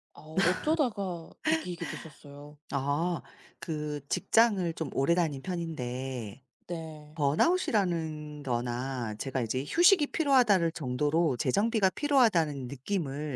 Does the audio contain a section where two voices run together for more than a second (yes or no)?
no